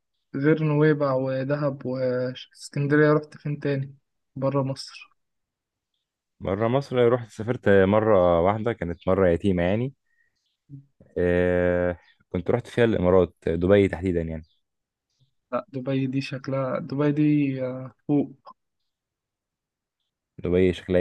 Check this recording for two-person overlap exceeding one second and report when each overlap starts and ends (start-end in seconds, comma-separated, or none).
none